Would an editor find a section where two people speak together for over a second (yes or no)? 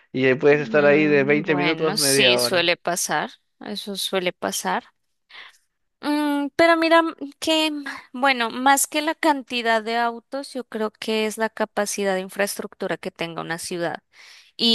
yes